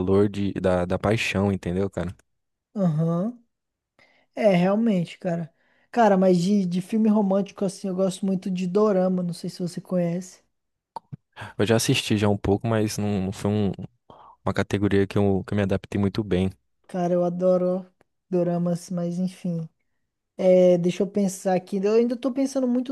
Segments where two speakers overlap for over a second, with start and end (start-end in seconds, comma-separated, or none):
none